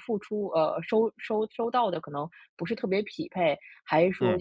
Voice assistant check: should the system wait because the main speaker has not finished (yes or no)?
yes